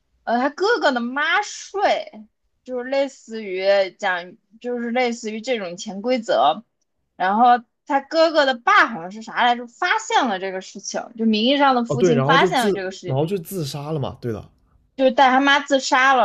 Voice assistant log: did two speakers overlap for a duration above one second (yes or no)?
yes